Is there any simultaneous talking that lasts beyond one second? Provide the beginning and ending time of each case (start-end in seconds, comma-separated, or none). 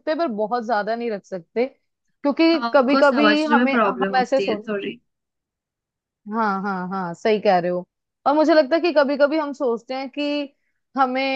2.5-4.7